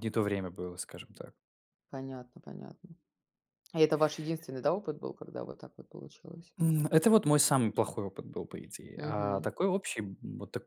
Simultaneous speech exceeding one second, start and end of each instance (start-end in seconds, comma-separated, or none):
none